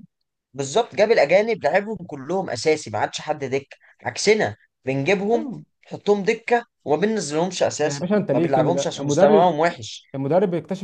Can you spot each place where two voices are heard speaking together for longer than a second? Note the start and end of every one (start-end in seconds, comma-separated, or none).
7.8-9.6